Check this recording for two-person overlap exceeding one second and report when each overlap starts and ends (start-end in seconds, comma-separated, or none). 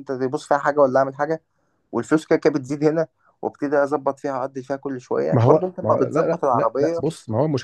5.3-7.0